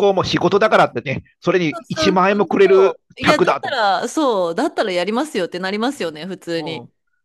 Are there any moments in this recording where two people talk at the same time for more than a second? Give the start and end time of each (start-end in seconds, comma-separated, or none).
1.7-3.9